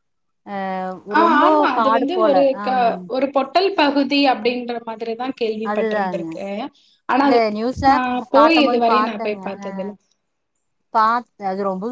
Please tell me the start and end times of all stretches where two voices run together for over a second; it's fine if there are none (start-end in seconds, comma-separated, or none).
none